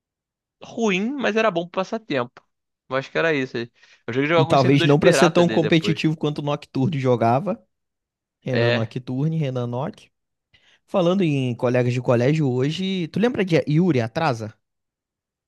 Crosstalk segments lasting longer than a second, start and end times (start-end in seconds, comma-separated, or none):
4.5-6.0